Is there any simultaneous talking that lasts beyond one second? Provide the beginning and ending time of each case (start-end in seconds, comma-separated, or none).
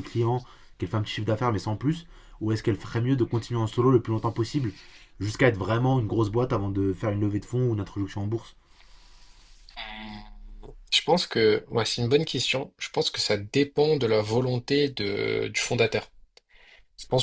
none